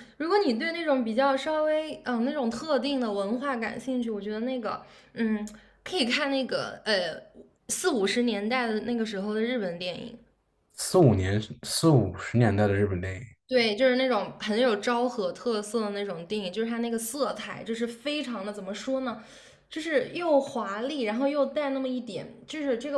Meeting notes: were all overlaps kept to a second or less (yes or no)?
yes